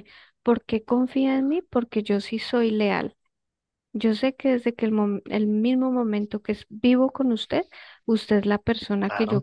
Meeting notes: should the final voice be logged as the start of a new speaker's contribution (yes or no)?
no